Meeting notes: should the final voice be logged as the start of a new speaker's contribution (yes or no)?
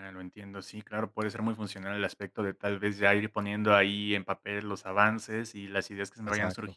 no